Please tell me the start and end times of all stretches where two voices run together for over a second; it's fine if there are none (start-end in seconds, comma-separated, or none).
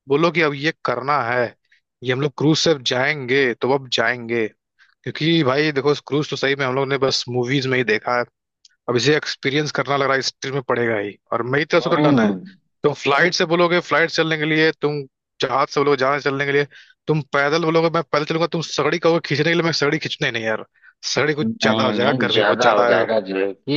21.4-23.1